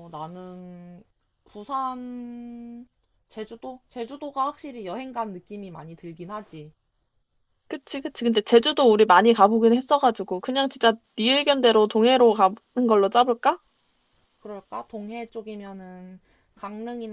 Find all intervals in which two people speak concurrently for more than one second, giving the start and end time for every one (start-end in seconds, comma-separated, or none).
none